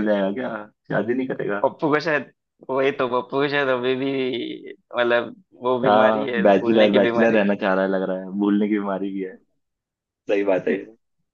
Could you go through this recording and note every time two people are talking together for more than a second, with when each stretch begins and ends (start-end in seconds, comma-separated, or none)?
5.8-7.4